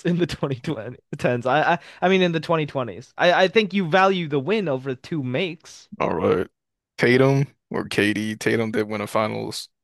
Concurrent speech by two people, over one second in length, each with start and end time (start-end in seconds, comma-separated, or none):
none